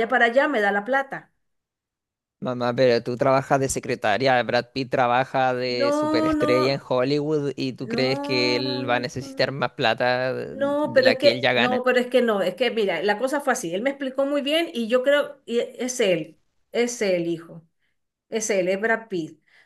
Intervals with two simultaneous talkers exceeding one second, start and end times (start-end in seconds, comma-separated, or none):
5.7-6.9, 7.8-9.6, 10.5-11.8